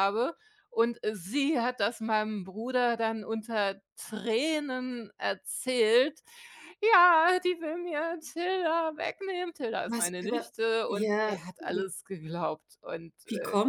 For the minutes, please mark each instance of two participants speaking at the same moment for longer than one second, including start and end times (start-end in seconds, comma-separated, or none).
9.9-11.9